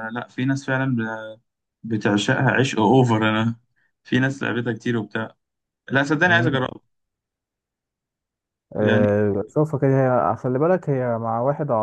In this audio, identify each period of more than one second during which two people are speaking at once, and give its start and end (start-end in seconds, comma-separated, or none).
none